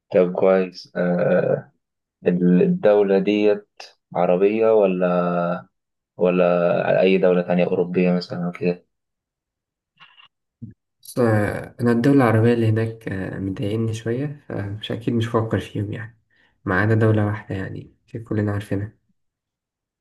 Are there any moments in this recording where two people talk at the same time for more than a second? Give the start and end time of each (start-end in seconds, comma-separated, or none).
none